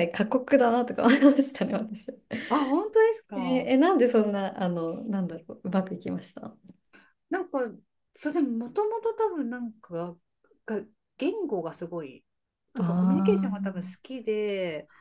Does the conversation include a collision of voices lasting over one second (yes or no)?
yes